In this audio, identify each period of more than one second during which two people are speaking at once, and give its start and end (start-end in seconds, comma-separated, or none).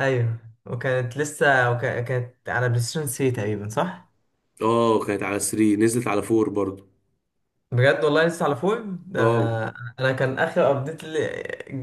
none